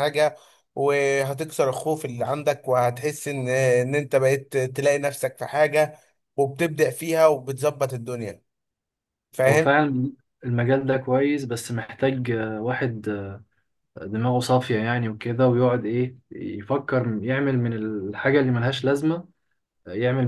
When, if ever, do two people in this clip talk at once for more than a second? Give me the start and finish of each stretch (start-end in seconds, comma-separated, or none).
none